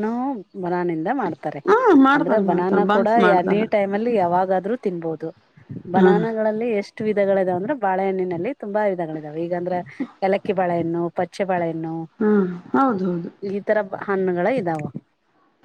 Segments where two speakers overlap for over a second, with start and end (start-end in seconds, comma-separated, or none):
2.2-3.6